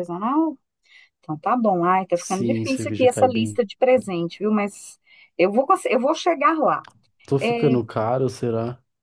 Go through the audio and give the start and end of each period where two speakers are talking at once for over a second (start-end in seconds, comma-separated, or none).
2.1-3.6